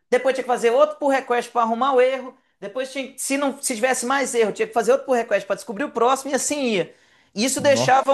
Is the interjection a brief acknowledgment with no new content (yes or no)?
yes